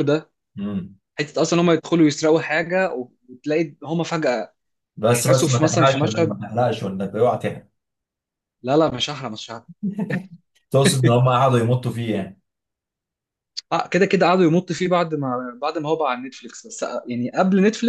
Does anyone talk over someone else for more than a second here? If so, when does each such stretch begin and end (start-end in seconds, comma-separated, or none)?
5.1-6.3